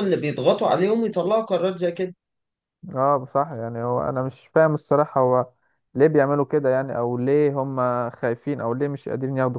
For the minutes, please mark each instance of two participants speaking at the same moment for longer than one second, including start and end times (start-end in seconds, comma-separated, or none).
none